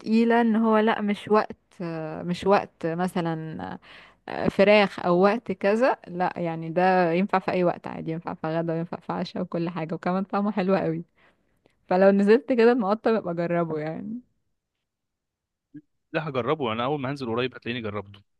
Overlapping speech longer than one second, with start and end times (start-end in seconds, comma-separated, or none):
none